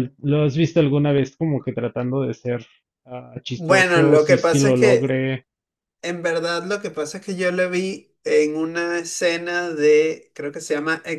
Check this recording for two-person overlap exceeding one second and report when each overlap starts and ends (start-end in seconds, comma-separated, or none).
3.5-5.2